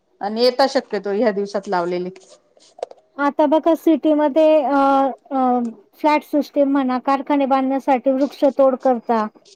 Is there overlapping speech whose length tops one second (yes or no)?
no